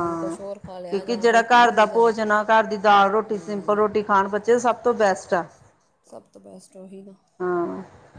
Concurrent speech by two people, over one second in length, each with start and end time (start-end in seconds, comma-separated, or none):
0.9-2.1